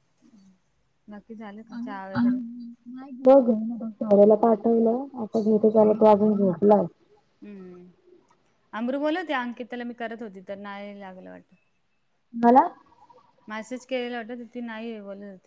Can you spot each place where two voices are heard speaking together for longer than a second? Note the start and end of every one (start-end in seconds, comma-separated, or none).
none